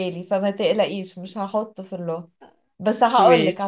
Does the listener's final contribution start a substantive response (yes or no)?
no